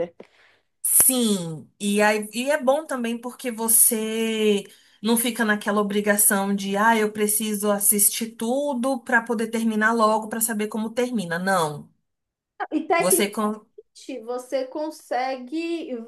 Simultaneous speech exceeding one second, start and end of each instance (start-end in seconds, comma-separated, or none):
none